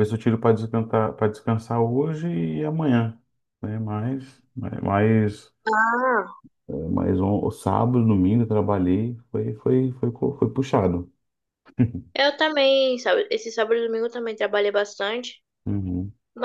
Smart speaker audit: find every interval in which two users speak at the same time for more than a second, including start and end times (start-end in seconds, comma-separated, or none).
none